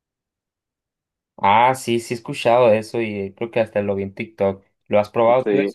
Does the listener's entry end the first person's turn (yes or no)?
yes